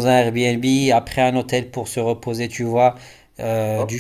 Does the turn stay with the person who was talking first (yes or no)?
yes